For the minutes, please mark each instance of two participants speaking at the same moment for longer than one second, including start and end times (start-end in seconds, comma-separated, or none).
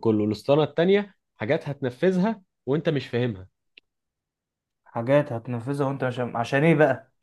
none